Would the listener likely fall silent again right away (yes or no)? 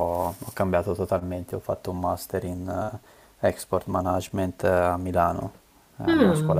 yes